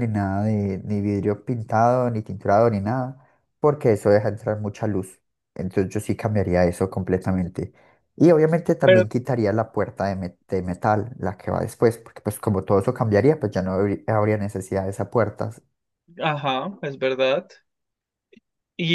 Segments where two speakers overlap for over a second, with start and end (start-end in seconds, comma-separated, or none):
none